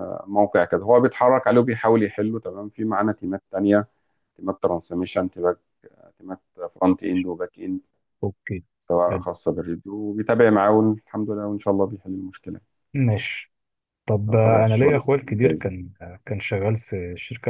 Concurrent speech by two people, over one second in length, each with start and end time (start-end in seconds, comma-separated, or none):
14.3-15.7